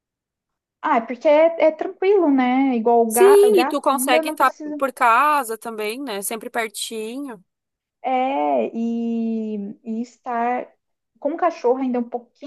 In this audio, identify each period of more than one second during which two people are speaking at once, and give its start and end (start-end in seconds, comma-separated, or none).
3.1-4.8